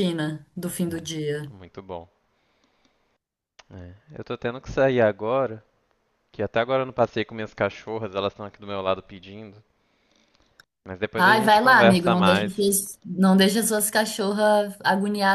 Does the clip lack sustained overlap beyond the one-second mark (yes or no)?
no